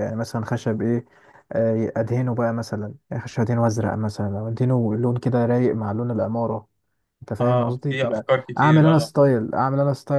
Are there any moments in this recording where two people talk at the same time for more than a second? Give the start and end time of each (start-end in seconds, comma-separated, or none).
7.4-9.1